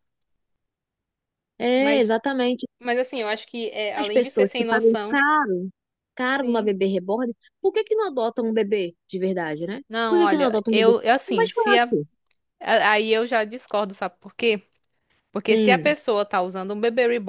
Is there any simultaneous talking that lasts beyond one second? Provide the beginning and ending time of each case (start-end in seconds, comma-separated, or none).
4.0-5.2, 9.9-11.9